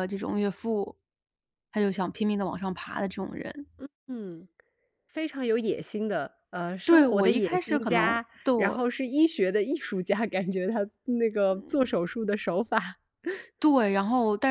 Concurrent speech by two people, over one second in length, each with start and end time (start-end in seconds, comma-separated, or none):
6.8-8.8